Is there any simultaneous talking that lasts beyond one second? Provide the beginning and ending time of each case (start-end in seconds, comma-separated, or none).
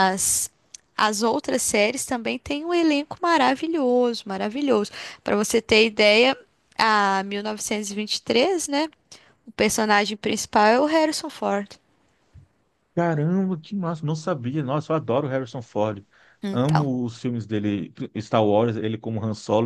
none